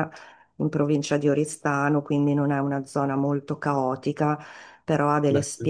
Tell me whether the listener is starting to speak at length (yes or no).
no